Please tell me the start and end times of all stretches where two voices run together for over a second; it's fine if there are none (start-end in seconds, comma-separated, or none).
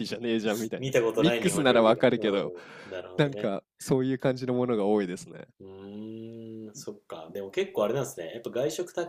0.8-2.5